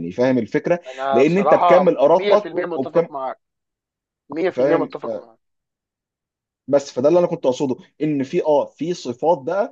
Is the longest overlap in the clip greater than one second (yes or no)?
yes